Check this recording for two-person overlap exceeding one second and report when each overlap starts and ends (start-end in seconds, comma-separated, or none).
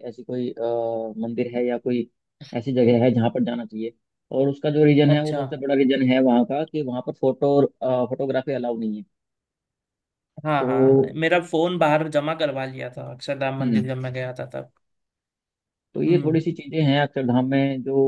none